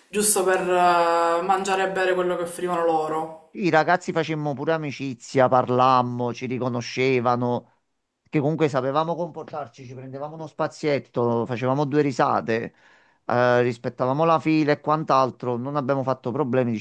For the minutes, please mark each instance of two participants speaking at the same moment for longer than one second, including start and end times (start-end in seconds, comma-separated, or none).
none